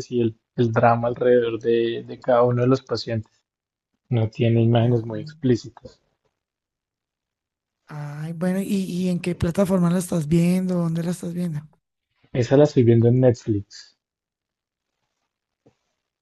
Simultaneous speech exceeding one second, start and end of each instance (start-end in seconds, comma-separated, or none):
none